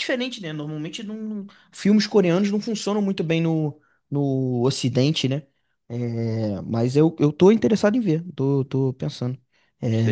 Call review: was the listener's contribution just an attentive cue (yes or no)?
no